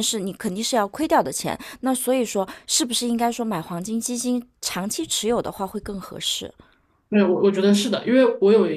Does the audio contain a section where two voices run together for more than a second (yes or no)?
no